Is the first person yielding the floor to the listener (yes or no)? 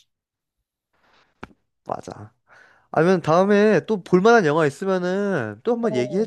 yes